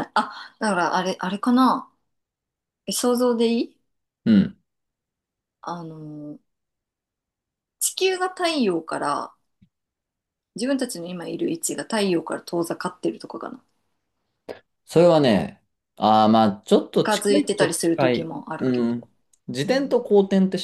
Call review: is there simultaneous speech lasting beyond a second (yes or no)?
yes